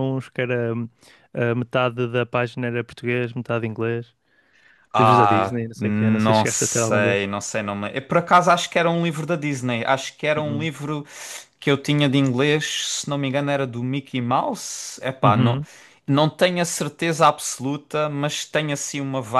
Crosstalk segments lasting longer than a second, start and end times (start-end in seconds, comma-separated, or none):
5.0-7.3